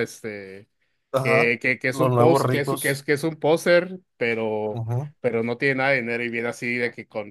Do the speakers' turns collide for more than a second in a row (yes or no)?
yes